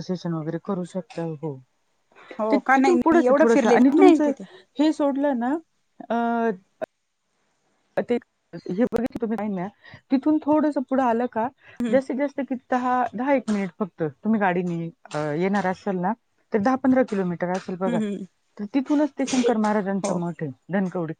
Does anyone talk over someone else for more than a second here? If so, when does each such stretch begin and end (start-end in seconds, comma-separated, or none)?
2.5-4.3